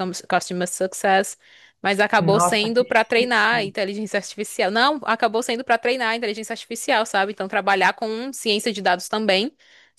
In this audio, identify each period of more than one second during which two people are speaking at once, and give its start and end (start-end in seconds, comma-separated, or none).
2.2-3.7